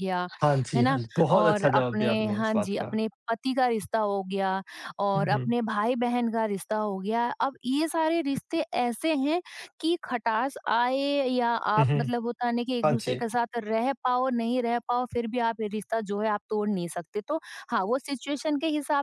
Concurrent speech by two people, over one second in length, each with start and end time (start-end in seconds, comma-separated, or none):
0.8-3.0